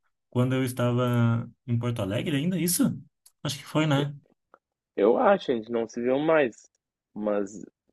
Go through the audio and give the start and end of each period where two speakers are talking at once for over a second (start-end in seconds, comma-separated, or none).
none